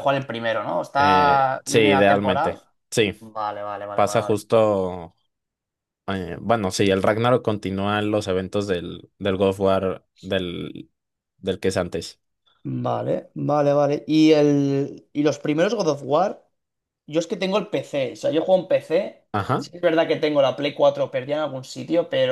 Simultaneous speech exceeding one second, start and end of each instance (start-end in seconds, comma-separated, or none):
1.0-2.6